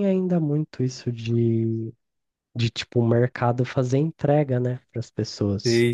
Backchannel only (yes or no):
yes